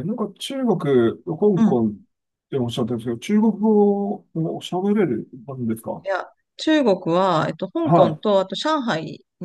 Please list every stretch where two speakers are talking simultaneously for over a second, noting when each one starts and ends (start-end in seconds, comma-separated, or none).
none